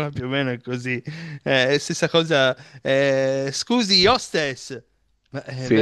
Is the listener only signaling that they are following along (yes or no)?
yes